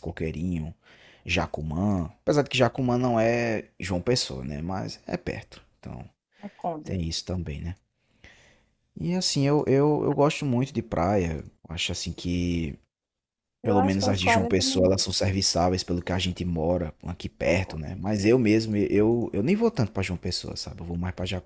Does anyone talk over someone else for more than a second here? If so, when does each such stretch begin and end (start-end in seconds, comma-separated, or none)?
13.6-15.0